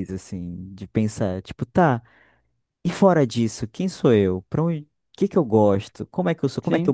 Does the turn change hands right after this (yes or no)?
no